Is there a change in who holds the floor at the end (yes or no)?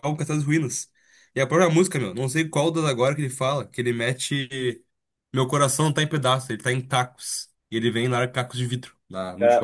yes